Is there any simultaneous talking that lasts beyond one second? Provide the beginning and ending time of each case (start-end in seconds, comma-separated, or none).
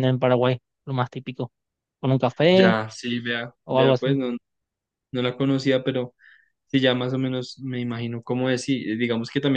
none